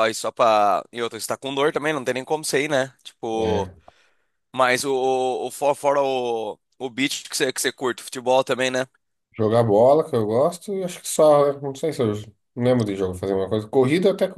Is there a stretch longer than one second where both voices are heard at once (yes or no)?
no